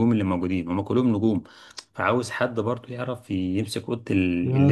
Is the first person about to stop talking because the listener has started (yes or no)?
yes